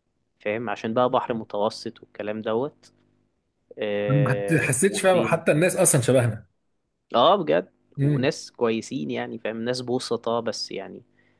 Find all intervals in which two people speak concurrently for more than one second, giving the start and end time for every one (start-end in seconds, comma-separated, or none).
4.1-5.4